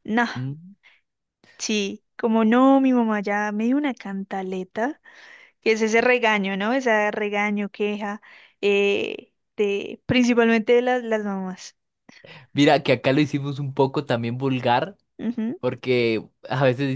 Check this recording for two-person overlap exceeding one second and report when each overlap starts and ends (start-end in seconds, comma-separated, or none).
none